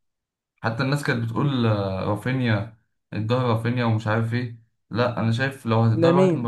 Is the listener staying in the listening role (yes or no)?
yes